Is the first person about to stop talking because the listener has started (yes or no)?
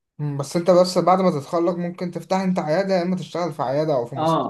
yes